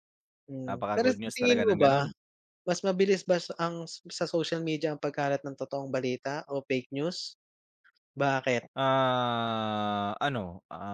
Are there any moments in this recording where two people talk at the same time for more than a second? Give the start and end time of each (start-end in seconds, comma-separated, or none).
0.7-2.0